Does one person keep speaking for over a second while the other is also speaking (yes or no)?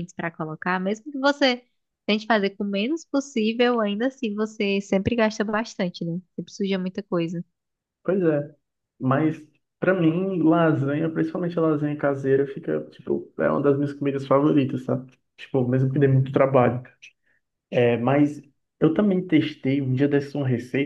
no